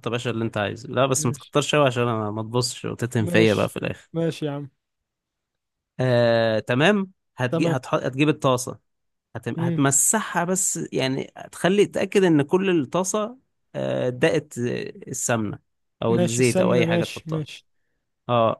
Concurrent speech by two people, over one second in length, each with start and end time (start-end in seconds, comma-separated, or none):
16.1-17.4